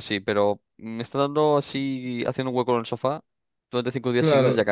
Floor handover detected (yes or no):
yes